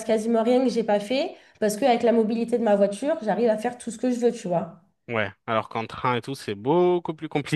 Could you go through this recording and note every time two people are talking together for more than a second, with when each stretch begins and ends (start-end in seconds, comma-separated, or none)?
none